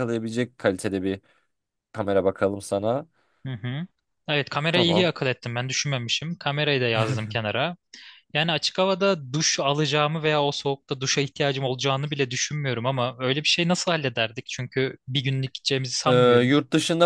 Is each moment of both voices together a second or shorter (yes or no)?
yes